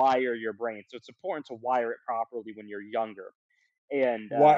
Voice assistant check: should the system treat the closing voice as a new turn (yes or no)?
yes